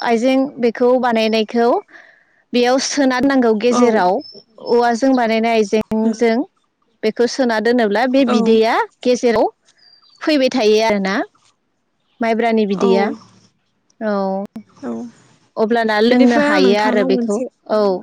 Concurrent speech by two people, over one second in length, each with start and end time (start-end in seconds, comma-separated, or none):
16.1-17.4